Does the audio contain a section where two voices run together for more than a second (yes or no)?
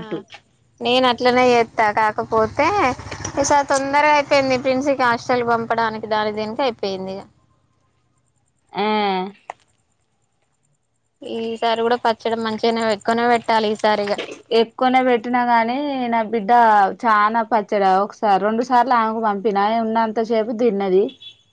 no